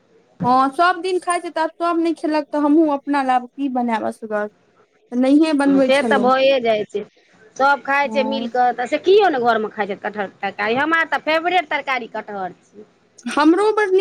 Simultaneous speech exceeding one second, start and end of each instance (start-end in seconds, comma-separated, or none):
none